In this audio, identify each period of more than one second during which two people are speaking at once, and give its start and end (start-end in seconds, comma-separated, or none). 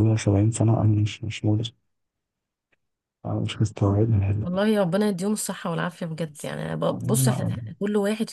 none